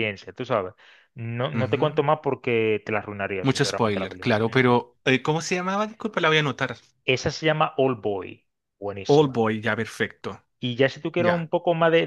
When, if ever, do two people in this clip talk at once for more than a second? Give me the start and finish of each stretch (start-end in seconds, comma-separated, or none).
3.4-4.8